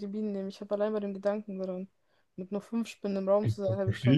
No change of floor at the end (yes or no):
no